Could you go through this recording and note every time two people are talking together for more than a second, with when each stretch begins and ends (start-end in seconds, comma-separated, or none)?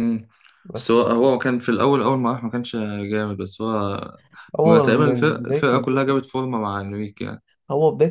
4.6-6.2